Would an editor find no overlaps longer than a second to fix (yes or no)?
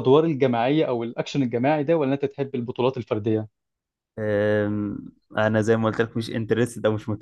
yes